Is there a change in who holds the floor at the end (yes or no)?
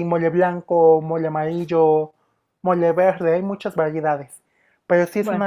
no